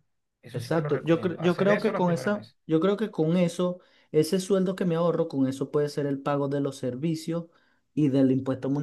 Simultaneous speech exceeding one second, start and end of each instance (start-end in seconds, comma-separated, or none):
0.5-2.6